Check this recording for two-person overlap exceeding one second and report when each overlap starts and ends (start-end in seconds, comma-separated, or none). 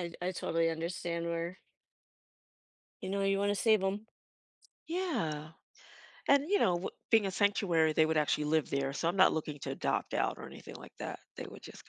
none